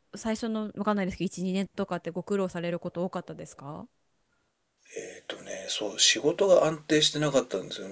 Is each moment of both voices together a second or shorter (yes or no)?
yes